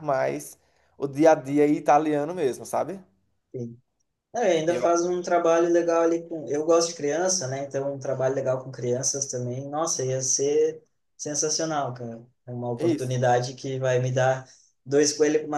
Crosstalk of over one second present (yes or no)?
no